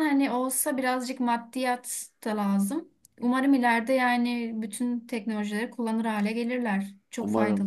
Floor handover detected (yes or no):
yes